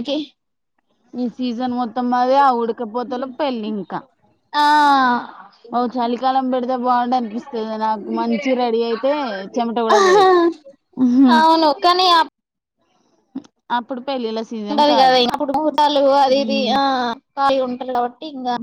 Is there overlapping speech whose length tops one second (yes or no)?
no